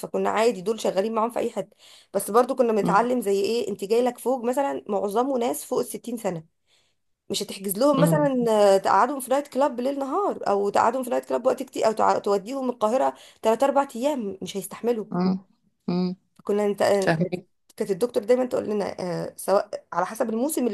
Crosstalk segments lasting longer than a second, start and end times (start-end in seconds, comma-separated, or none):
none